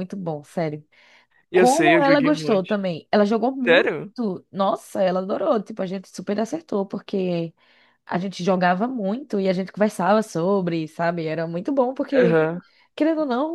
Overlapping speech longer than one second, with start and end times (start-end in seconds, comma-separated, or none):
1.5-2.8